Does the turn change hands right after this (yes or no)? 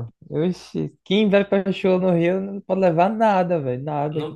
yes